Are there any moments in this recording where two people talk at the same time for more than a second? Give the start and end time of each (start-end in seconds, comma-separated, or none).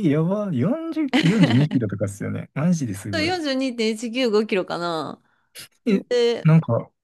none